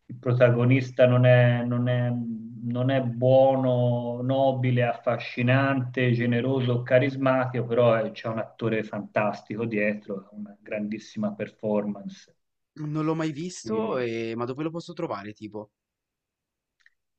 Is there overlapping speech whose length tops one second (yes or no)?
no